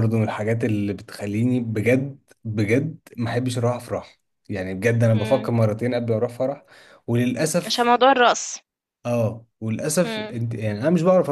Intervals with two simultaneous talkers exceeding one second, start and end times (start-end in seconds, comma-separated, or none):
none